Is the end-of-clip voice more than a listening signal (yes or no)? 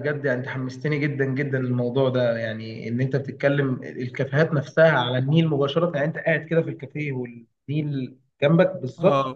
yes